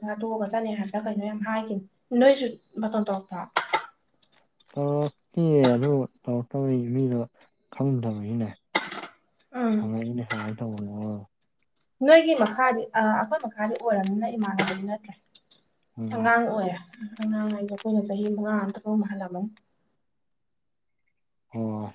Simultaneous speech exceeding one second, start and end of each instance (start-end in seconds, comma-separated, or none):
none